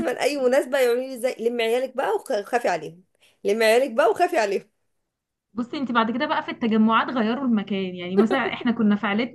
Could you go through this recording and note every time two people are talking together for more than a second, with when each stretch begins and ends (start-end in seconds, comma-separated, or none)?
none